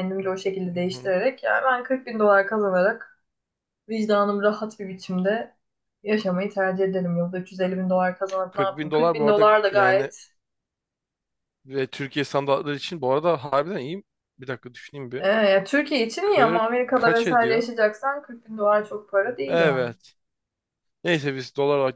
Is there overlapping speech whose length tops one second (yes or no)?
yes